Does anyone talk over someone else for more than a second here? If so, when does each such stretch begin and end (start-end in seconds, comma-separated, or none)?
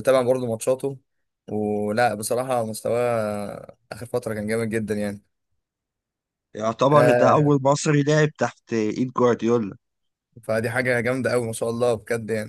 none